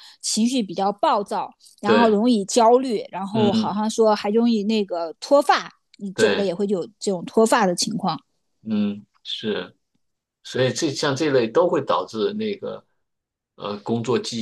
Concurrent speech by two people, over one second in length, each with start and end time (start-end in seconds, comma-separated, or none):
none